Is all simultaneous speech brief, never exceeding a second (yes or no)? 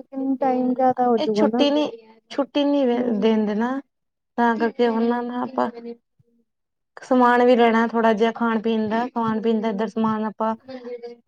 yes